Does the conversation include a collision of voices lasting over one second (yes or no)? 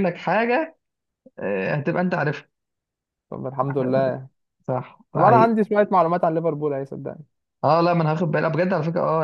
no